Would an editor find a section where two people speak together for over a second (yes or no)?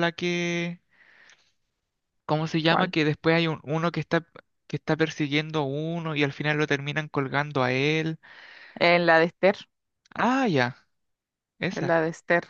no